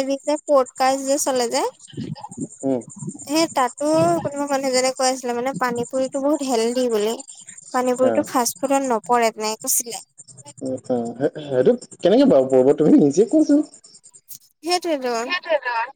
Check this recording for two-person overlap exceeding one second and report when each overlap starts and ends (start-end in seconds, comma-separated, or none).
none